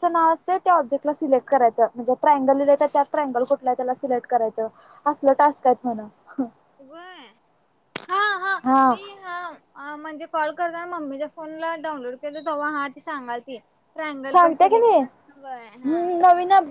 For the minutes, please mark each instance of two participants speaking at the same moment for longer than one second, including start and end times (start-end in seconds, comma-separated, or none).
14.3-16.0